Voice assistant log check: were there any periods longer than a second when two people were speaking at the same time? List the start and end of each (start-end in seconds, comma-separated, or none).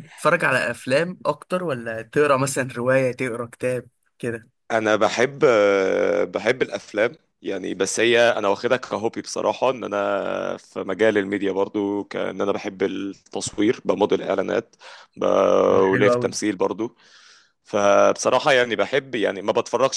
none